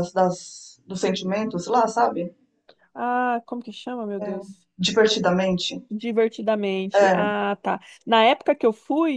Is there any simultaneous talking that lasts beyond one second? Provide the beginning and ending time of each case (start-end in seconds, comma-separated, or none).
none